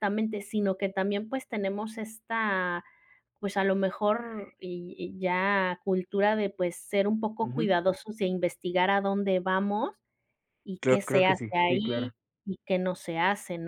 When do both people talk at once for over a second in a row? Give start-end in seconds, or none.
10.8-12.1